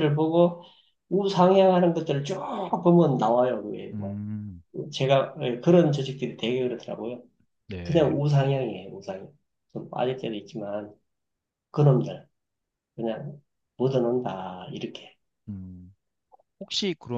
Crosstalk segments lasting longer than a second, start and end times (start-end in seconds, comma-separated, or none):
none